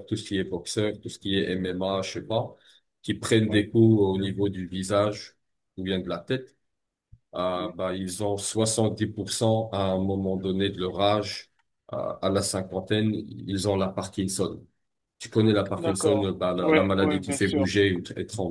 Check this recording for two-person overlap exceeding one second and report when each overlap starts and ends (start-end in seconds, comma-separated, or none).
15.8-17.7